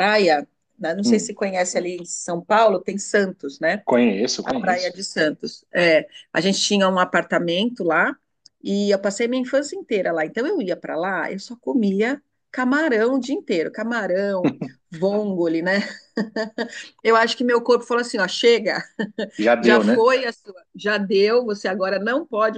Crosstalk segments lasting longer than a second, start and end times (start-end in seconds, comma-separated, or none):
none